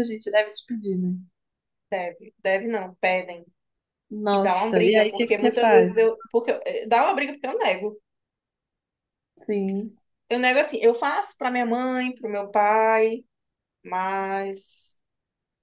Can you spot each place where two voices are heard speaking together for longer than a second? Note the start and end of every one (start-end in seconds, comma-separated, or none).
4.3-5.9